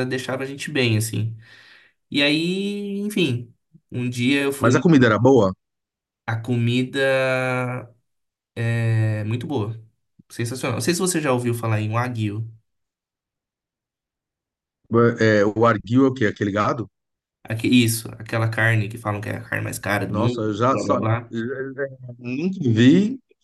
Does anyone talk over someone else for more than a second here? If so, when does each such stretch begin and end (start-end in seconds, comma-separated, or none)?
20.1-21.3